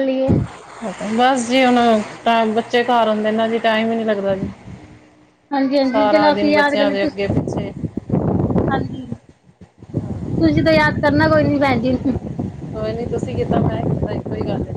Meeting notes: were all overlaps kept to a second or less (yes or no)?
no